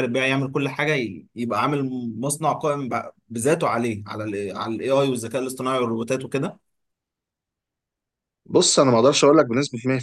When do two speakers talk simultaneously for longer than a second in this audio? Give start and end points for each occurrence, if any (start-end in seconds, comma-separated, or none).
none